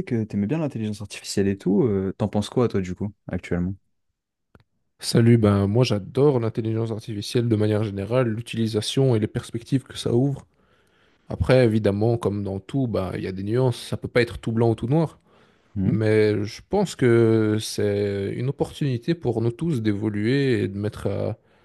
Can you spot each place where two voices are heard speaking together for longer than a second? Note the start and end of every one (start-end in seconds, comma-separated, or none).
none